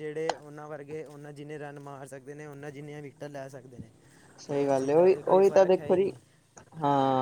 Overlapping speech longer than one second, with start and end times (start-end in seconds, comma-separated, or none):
4.5-6.1